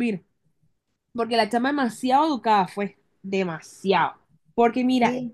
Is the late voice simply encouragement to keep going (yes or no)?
yes